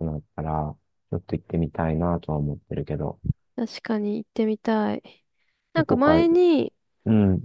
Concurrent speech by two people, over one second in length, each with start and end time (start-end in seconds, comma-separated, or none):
none